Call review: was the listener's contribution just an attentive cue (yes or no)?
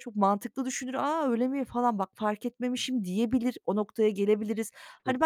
yes